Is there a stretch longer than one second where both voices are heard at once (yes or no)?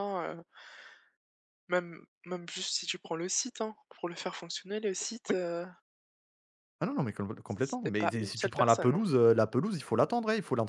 yes